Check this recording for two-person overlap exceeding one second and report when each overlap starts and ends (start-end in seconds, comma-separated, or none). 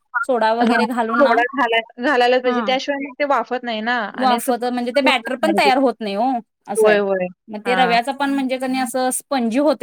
4.2-5.7